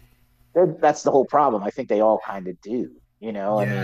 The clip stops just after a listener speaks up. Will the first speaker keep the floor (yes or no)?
no